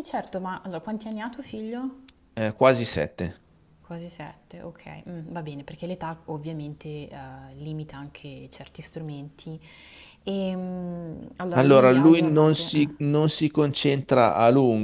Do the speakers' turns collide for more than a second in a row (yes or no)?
yes